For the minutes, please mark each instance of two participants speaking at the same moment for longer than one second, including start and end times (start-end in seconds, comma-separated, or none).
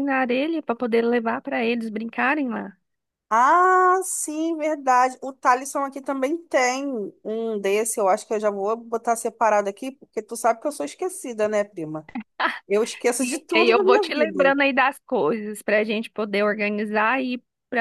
13.2-14.6